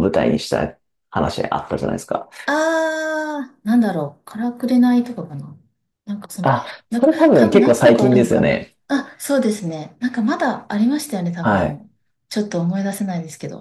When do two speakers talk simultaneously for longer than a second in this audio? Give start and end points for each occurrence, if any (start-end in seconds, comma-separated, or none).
6.4-8.7